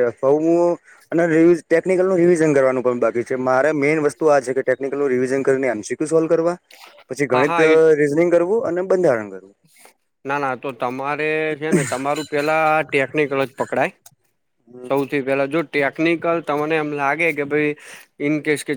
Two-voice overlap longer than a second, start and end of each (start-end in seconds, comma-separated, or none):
none